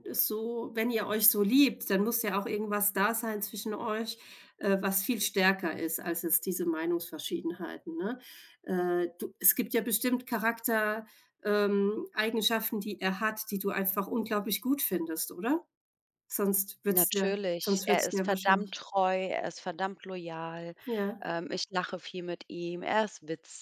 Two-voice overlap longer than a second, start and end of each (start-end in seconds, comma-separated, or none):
16.9-18.8